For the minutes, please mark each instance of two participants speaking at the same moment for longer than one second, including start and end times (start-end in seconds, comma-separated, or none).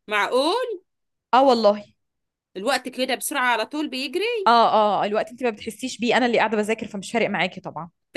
none